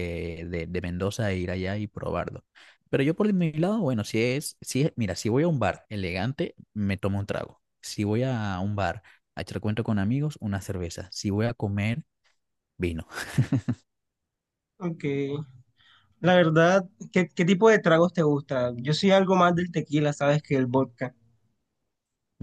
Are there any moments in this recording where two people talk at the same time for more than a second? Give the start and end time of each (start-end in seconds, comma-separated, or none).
none